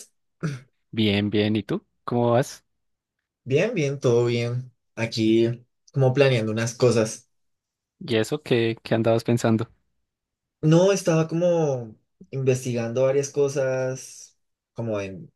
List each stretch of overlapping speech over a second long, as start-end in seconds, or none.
none